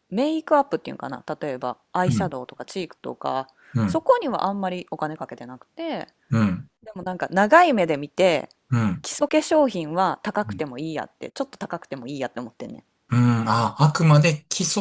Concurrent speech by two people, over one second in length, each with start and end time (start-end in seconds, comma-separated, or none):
none